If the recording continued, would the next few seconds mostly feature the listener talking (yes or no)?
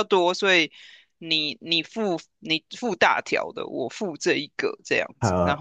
yes